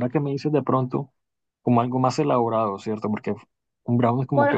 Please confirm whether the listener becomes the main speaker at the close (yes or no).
yes